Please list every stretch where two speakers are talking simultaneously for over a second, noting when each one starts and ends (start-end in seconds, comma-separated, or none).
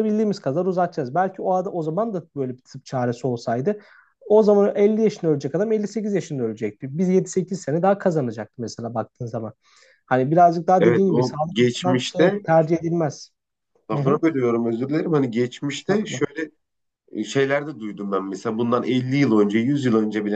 10.8-12.4